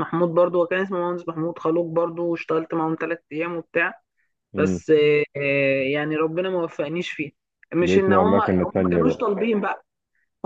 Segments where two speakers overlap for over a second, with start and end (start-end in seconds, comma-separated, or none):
7.8-9.2